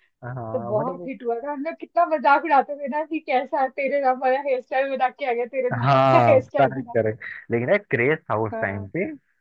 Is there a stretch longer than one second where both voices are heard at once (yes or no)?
yes